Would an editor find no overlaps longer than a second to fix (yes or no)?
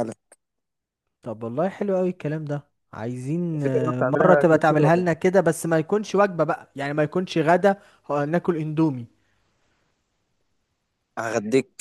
no